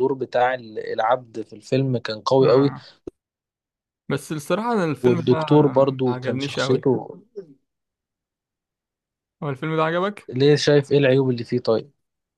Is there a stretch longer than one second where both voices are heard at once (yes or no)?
yes